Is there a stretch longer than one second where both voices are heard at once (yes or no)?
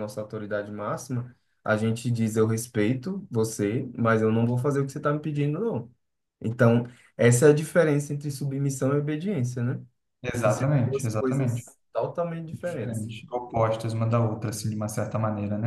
yes